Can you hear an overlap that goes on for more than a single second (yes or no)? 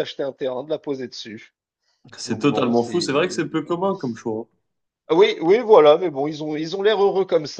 yes